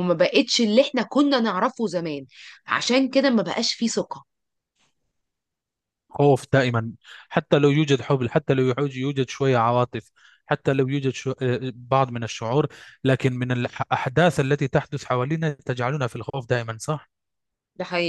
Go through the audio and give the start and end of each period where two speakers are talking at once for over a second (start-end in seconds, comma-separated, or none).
none